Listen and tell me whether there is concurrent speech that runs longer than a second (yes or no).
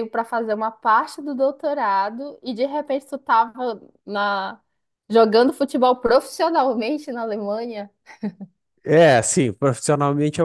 no